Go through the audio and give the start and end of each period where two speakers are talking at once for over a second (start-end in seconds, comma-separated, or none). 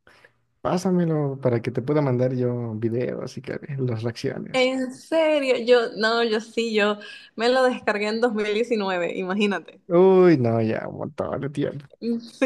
none